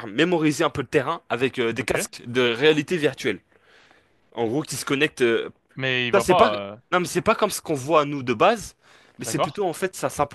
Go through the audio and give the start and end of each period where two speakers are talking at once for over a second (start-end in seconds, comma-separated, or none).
none